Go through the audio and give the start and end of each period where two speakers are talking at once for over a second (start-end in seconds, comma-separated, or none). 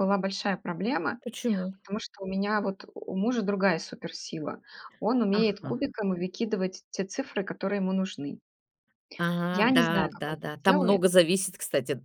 9.5-11.0